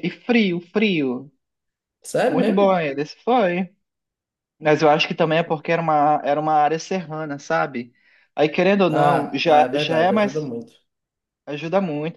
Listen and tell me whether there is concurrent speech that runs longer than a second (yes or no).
yes